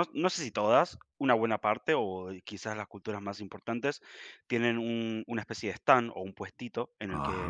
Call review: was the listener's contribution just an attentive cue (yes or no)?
yes